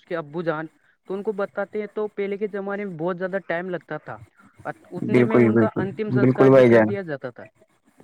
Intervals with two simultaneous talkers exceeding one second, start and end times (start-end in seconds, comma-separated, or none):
5.1-6.9